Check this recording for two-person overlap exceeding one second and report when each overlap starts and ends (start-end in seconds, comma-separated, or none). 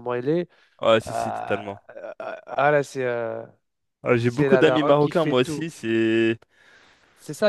4.2-5.7